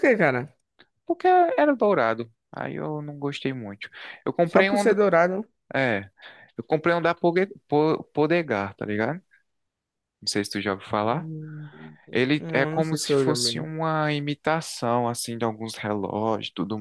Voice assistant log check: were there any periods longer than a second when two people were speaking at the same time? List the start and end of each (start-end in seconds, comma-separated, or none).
12.4-13.7